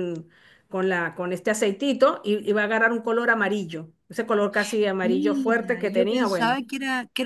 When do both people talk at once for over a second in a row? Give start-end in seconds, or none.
5.0-6.6